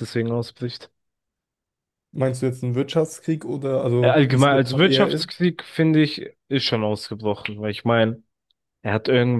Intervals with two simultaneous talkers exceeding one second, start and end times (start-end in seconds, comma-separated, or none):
4.0-5.2